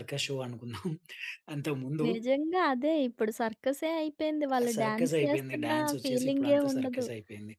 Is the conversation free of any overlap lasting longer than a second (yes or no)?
no